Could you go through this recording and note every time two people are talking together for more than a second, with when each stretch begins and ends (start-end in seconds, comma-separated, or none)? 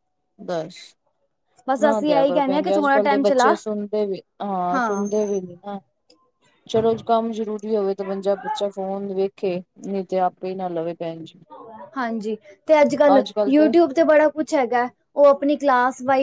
1.8-3.5